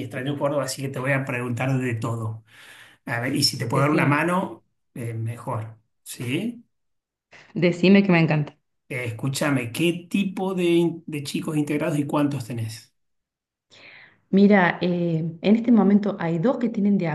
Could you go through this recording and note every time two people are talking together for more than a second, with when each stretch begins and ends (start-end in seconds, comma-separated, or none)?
none